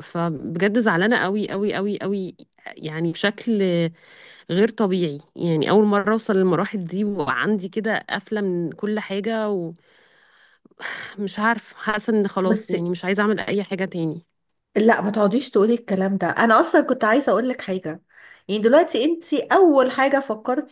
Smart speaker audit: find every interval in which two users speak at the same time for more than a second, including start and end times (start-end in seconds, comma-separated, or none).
none